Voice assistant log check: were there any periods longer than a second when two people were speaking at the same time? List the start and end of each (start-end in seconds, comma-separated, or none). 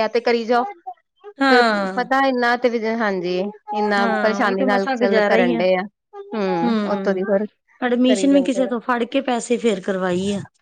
4.0-5.5